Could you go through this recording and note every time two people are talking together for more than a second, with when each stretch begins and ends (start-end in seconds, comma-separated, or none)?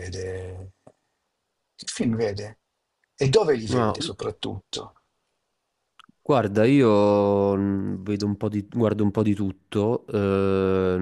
none